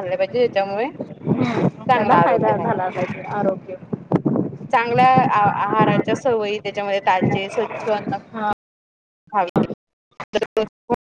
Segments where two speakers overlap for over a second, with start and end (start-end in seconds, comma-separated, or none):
1.2-2.7